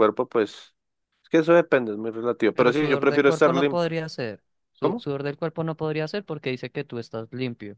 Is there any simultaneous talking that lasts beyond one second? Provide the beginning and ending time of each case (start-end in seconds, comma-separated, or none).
2.5-3.9